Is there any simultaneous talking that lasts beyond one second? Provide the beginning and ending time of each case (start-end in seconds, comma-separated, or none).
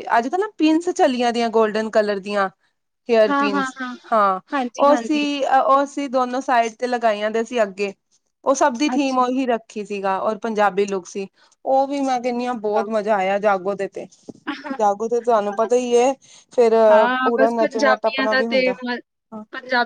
17.2-18.8